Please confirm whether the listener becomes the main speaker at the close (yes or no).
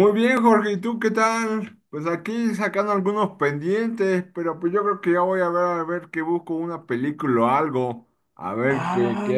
yes